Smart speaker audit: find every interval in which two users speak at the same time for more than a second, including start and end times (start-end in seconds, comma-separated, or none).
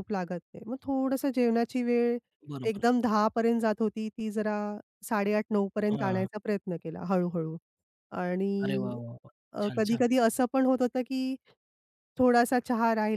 none